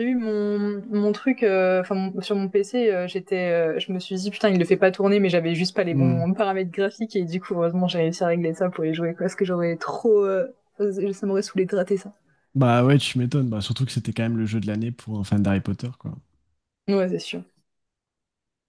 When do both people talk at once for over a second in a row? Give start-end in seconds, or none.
none